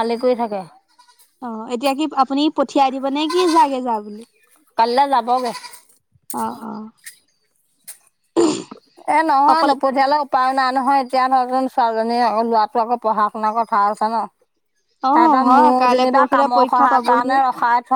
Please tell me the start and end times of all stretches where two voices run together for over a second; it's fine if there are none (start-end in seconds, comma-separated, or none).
15.1-17.4